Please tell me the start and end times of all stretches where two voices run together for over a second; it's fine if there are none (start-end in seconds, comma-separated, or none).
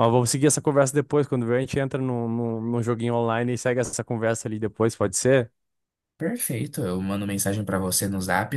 none